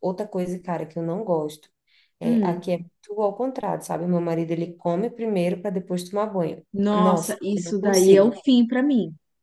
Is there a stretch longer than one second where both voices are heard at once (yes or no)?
yes